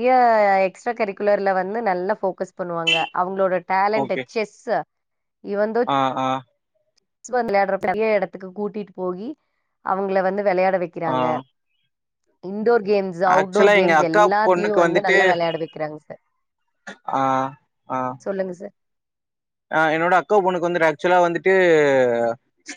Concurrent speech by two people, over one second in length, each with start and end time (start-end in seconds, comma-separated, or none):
13.4-15.2